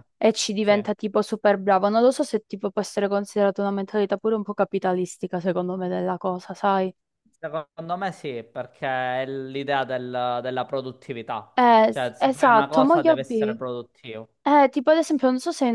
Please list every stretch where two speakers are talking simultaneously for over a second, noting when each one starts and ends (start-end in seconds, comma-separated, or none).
11.9-13.6